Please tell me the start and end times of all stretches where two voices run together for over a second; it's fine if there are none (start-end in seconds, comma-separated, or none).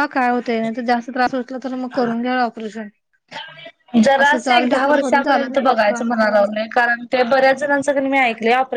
4.2-6.4